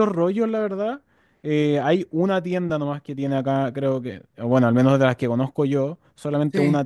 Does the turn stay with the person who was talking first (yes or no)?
yes